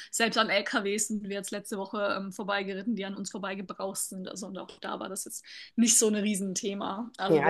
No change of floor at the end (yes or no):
no